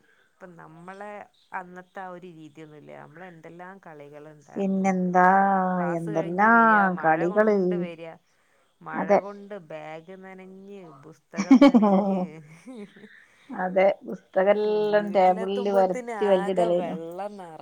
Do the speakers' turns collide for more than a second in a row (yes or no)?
yes